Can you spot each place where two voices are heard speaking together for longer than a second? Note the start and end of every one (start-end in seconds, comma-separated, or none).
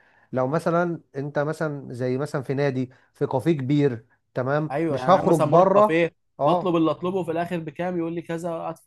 4.7-6.8